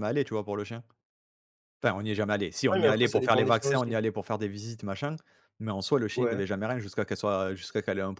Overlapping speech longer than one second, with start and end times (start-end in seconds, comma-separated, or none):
2.7-4.0